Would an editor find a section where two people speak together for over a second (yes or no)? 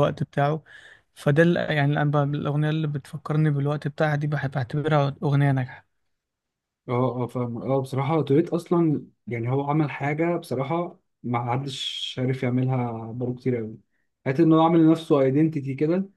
no